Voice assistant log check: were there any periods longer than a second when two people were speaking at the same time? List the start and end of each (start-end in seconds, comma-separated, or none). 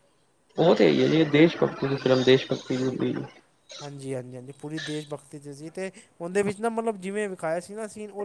1.9-3.2